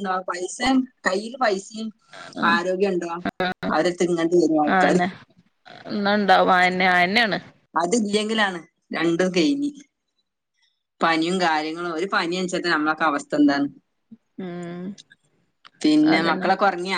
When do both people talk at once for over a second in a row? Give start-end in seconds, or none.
none